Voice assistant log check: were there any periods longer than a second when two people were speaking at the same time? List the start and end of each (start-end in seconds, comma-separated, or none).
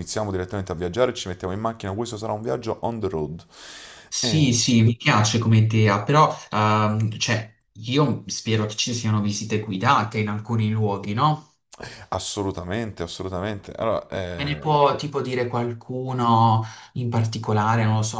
none